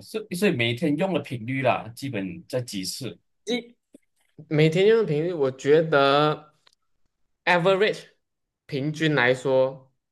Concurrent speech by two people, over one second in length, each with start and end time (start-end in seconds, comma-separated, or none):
none